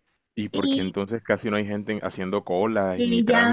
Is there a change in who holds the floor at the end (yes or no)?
yes